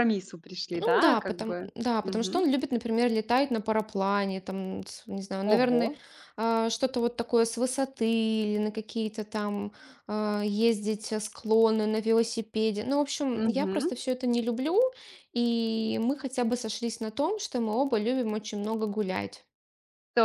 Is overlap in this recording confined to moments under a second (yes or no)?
no